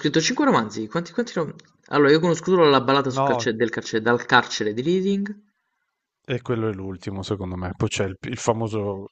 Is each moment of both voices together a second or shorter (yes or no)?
yes